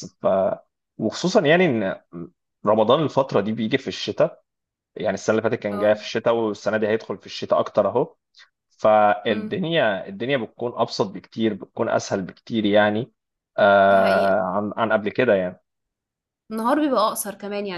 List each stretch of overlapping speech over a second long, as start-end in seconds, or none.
none